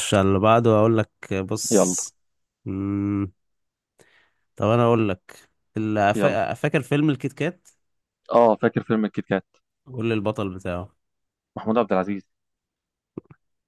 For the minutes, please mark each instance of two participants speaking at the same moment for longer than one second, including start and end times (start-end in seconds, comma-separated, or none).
none